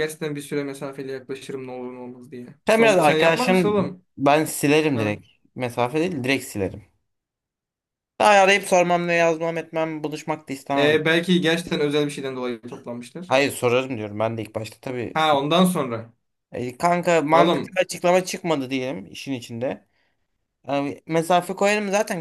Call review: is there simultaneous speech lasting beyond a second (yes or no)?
yes